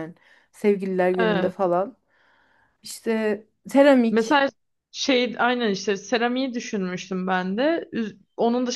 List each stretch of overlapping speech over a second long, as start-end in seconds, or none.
none